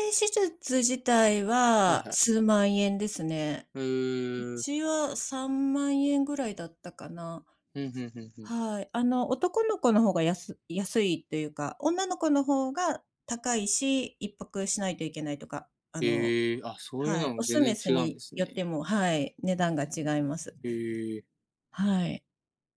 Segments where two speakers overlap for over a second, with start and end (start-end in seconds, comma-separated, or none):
17.0-18.6